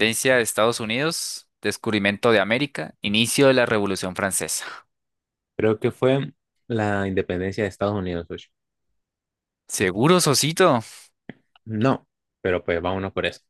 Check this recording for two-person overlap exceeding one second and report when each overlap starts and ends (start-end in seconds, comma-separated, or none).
none